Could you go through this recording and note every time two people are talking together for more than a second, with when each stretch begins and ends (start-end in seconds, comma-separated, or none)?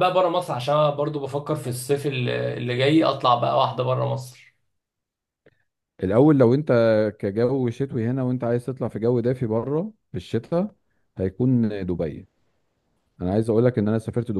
none